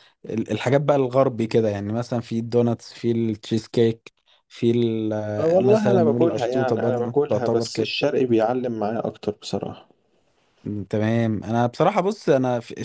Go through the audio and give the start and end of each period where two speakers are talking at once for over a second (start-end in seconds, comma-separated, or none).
5.4-7.9